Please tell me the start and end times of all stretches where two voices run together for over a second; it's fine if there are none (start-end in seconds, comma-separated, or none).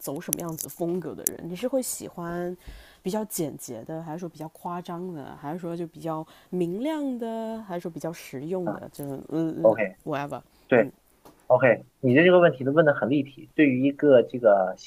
none